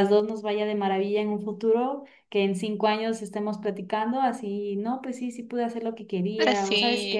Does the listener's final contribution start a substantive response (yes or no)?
no